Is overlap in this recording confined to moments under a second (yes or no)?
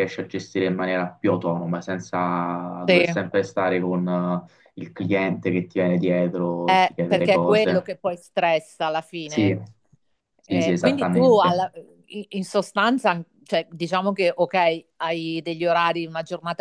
no